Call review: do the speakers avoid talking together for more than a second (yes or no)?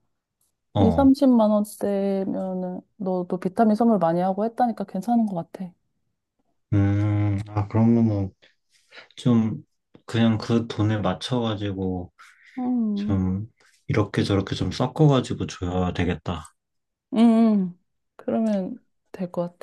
yes